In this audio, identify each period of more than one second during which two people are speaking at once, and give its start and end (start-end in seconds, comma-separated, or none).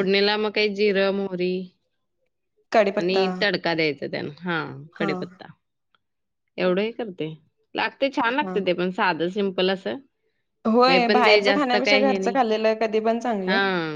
none